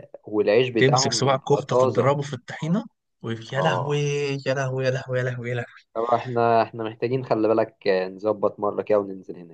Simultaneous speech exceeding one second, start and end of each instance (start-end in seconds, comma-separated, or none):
0.8-2.1